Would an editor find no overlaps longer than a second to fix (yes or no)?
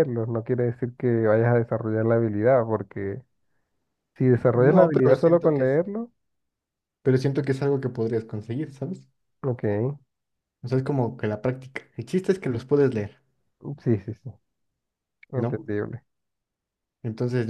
no